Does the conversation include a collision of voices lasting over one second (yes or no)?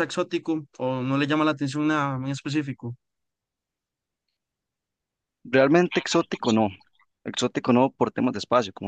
no